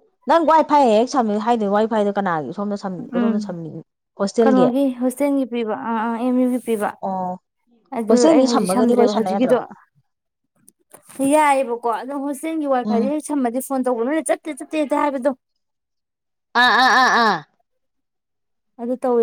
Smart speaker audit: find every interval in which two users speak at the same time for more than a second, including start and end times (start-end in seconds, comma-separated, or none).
8.1-9.6